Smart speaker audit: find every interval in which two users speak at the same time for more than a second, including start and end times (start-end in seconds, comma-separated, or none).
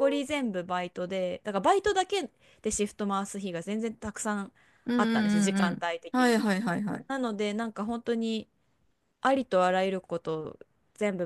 5.0-6.4